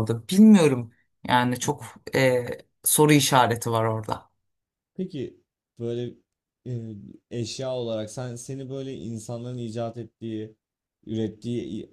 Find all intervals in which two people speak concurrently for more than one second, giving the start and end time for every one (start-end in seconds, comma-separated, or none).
none